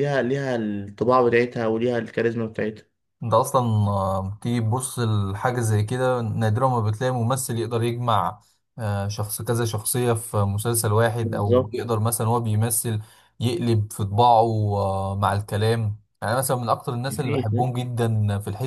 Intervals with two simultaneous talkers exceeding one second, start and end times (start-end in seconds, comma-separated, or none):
none